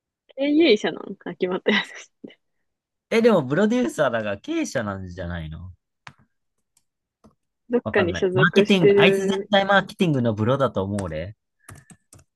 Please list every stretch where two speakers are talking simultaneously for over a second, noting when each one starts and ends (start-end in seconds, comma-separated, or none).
7.8-9.5